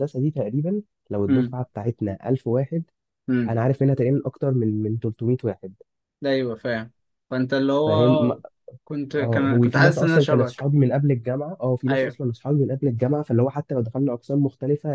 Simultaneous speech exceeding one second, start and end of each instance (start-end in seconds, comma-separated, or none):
9.2-10.7